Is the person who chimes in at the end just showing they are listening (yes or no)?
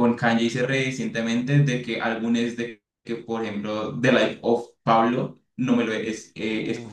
yes